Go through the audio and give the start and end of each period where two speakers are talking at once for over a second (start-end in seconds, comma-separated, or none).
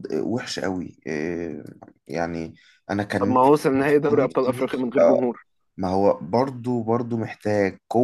3.2-5.2